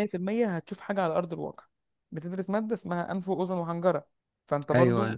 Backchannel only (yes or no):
yes